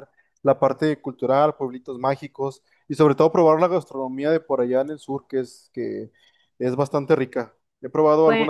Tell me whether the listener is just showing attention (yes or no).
yes